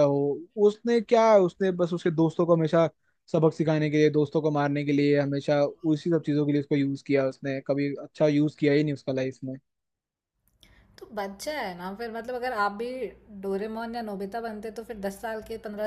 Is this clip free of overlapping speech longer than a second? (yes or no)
yes